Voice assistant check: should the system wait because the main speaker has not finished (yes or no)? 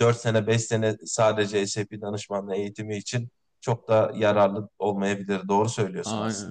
no